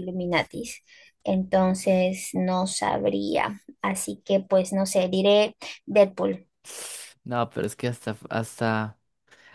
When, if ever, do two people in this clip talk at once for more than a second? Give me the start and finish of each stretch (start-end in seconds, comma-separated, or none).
none